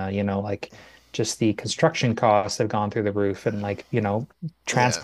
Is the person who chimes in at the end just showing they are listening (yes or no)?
yes